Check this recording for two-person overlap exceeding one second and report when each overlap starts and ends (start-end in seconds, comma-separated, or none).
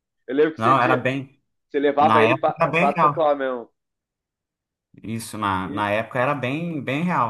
2.0-3.3